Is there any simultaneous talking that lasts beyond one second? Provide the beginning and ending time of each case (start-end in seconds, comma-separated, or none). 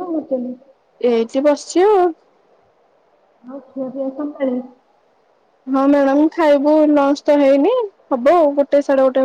none